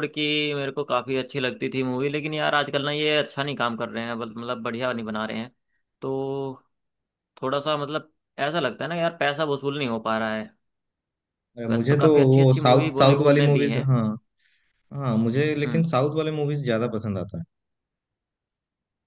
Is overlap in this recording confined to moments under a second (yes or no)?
no